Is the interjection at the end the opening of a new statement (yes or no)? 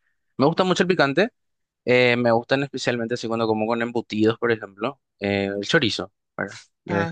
no